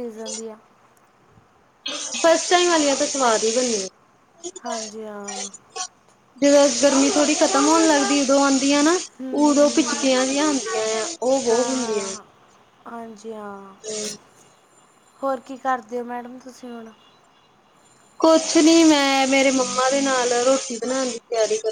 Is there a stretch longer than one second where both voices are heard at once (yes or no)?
no